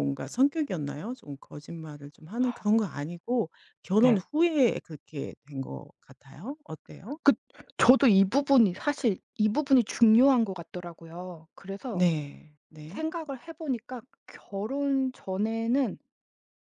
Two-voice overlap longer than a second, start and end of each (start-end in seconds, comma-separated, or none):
none